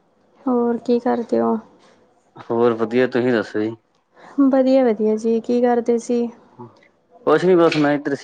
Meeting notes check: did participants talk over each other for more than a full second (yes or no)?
no